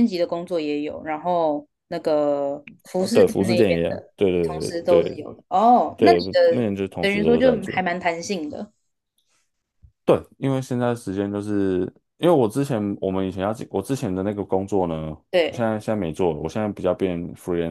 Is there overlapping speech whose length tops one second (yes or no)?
yes